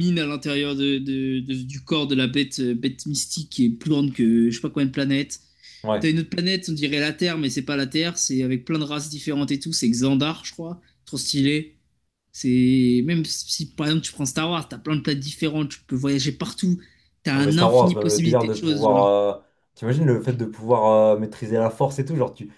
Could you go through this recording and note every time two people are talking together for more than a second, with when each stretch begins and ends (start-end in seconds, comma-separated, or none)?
17.4-19.1